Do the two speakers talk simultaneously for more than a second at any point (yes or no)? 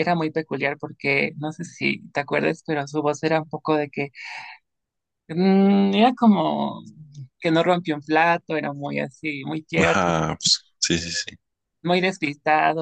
no